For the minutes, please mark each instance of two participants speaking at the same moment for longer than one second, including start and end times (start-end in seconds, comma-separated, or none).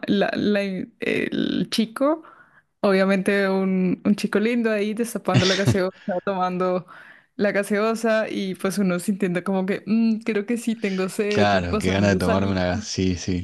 11.3-12.9